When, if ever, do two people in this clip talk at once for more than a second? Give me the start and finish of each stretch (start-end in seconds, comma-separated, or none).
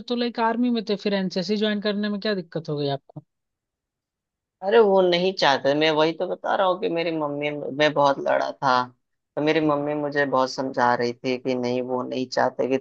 none